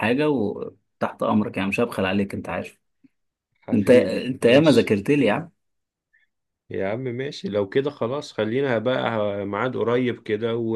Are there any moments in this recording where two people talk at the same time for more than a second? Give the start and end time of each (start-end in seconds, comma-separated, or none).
3.7-5.0